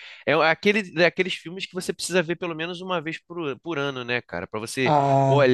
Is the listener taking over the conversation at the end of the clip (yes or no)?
no